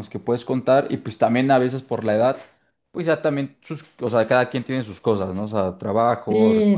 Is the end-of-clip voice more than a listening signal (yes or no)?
yes